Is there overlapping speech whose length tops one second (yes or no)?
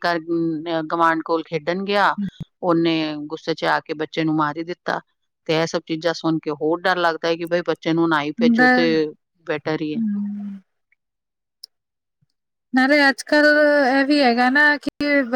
no